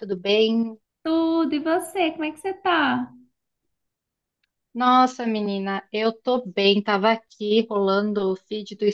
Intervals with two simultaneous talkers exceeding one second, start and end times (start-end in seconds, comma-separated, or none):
none